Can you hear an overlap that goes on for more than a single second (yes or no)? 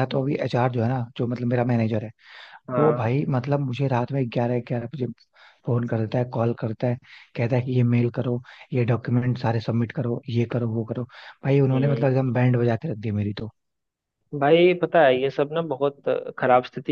no